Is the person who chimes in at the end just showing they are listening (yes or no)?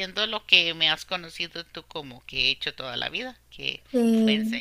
no